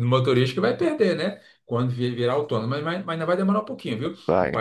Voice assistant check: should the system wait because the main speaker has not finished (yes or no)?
yes